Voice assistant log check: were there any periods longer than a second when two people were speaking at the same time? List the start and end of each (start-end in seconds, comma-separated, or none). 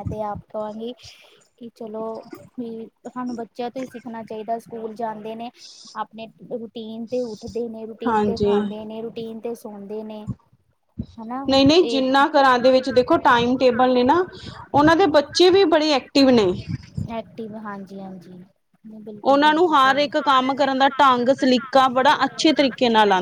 none